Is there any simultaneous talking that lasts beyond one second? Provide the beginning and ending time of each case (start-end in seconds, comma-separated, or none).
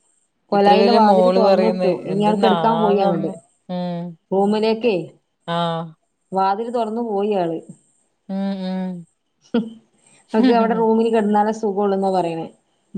0.6-3.3